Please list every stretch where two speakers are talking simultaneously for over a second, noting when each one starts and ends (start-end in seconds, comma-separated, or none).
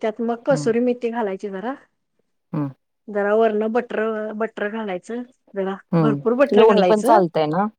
5.9-7.2